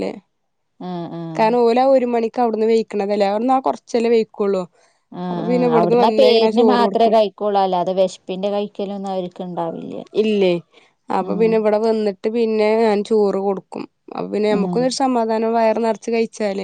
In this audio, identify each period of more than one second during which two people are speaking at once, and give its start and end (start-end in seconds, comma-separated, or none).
none